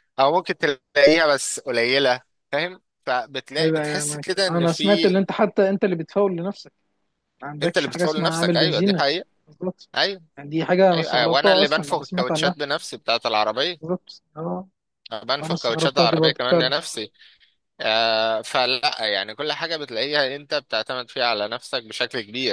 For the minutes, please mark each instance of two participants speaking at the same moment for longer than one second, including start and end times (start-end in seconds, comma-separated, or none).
3.6-5.1, 7.6-9.0, 10.9-12.5, 15.4-16.7